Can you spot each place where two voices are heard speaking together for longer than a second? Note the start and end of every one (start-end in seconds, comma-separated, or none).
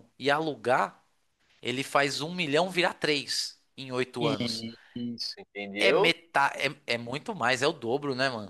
none